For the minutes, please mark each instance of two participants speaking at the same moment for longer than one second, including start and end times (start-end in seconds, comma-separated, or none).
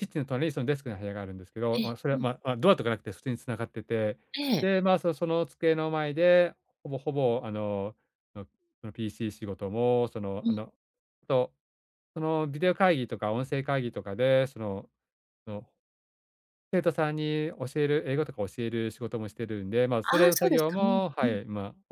20.0-21.4